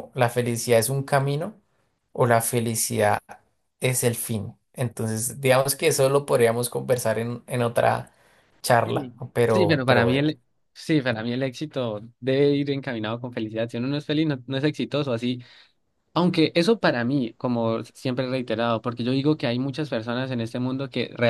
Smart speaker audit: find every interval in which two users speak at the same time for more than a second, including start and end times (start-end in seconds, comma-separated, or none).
8.8-10.3